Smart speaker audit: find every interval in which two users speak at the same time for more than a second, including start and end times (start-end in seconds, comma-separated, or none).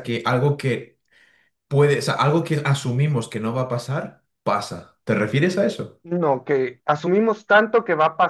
none